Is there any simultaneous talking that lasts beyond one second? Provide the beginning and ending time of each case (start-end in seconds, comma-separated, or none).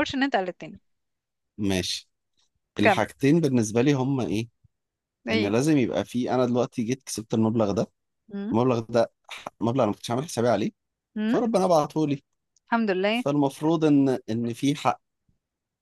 none